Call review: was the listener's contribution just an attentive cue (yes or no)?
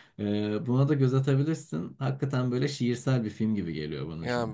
no